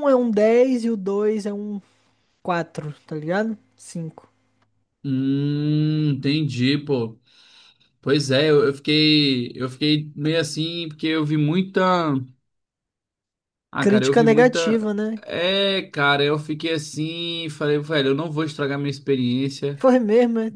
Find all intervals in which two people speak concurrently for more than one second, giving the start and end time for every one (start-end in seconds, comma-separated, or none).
13.8-15.2